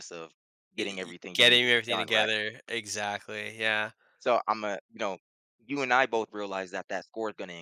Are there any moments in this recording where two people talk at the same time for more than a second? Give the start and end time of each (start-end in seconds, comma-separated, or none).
0.8-2.3